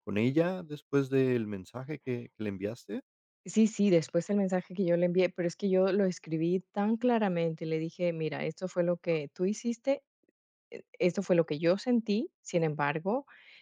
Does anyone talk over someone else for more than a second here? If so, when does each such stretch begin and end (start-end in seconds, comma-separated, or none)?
none